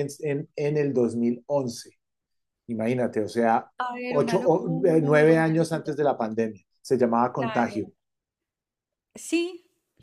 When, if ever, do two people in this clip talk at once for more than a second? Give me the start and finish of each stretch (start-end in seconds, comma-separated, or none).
4.1-5.9